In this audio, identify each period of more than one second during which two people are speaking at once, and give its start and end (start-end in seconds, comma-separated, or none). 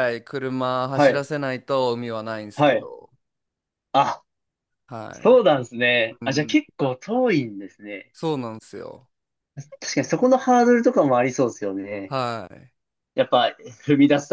none